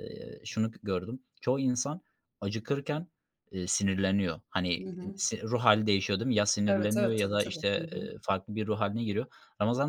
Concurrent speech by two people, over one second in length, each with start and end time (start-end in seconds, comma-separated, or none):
6.7-8.1